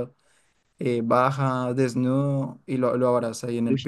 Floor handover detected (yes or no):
no